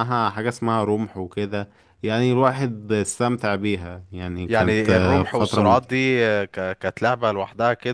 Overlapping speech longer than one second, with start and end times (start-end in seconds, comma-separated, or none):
4.5-5.9